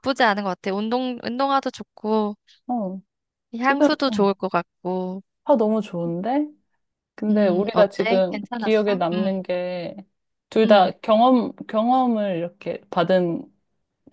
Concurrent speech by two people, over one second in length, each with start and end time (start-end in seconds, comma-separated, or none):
7.3-9.3